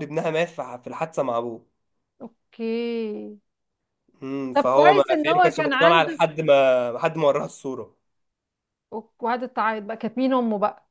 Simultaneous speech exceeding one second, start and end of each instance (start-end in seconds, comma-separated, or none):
4.5-6.2